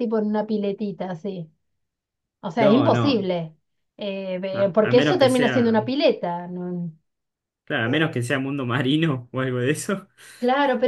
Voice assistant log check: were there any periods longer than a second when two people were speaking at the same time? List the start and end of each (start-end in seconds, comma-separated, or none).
4.5-5.8